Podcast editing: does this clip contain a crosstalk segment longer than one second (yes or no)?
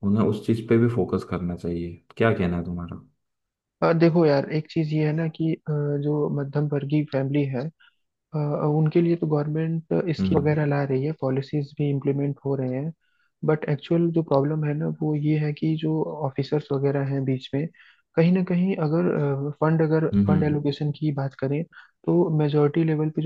no